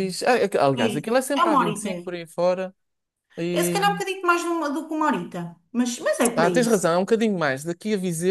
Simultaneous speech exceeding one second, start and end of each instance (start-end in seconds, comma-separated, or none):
0.8-2.1